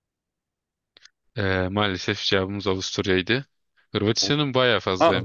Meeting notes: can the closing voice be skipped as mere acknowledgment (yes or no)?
no